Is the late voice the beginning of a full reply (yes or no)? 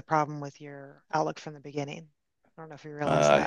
yes